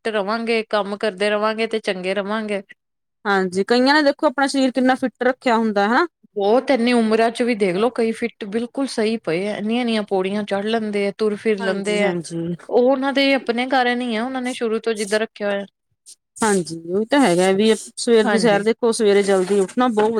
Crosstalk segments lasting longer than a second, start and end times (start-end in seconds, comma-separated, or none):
none